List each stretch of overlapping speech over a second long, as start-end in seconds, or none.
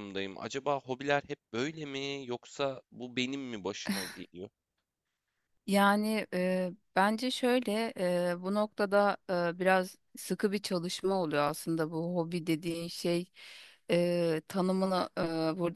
none